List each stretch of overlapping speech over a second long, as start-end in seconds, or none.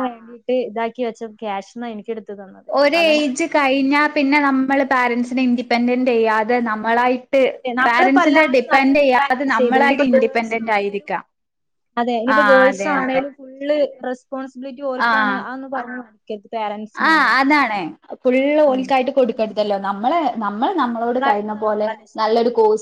7.9-11.1